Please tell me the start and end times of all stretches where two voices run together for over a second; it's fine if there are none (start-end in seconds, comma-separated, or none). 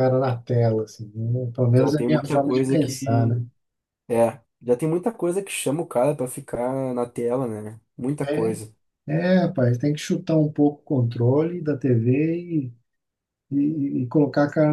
1.8-3.4